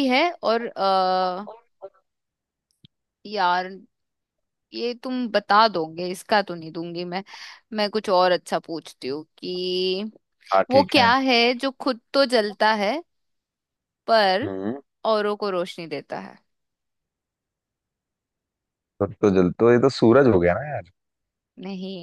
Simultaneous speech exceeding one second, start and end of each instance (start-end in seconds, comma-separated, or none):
none